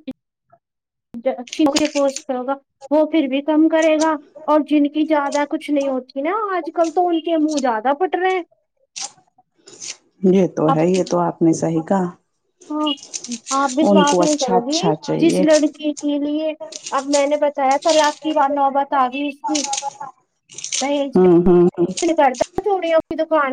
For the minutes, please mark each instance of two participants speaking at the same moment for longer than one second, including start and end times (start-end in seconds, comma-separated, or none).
13.9-15.4